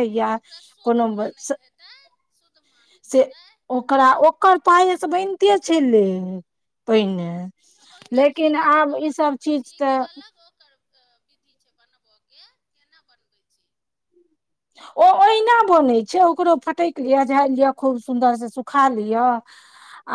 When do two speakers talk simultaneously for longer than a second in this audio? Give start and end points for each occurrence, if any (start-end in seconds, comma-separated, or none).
8.1-10.0